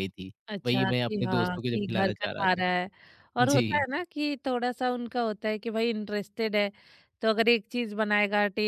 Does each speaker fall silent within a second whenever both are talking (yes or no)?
no